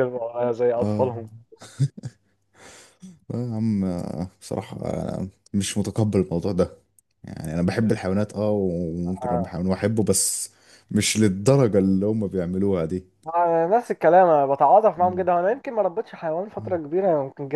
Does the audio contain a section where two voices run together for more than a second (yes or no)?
no